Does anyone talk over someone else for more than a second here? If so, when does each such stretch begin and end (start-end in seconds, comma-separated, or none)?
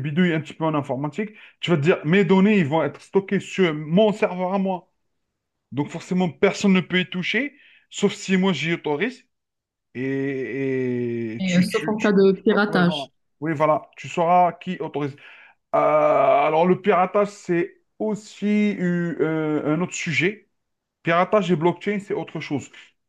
11.4-13.0